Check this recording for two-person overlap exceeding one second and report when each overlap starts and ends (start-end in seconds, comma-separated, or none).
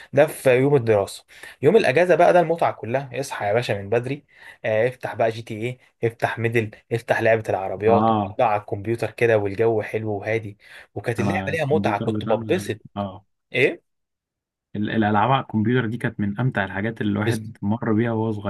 11.2-12.8